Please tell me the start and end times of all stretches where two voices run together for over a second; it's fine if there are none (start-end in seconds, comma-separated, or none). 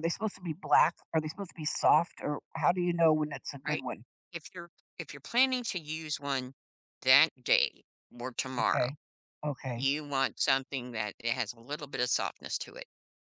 none